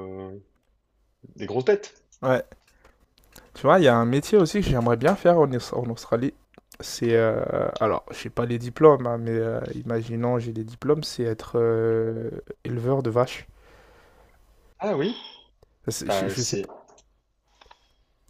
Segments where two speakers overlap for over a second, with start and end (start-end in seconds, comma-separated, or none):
none